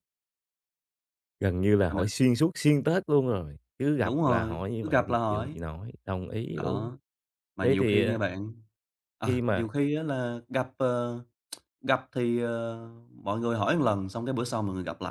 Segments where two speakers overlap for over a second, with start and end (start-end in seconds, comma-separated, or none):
4.0-5.6